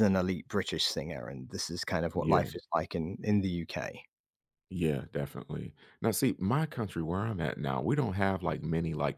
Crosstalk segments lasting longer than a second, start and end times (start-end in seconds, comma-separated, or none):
none